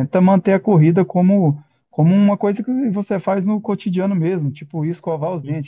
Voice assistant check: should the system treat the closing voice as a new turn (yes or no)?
no